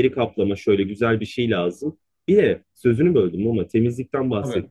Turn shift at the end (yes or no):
no